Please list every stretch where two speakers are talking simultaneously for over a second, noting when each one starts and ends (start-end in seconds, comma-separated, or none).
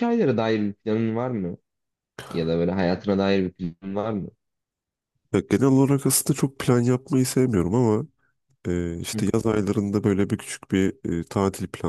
none